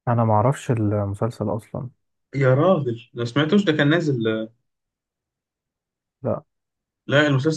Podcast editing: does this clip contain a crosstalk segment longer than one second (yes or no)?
no